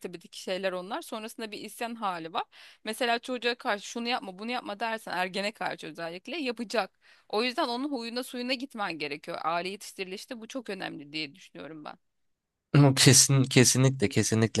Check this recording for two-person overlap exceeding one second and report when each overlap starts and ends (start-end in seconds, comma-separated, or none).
none